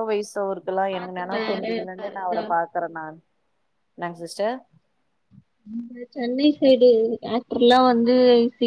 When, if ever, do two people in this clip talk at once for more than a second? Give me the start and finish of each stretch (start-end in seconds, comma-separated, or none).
0.9-2.4